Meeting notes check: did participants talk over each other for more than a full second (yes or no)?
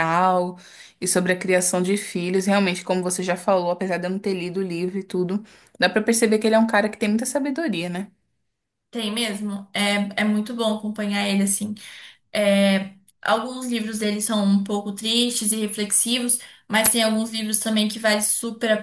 no